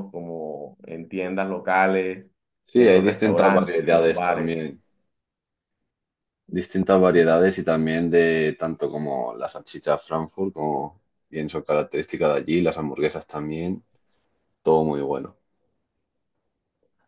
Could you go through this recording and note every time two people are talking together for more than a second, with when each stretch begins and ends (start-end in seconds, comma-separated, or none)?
2.7-4.6